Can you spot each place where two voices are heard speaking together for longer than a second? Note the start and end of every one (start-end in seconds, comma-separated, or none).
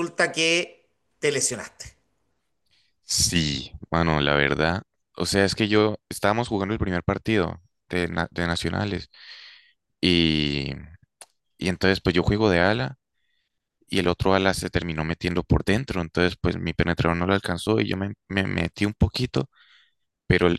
none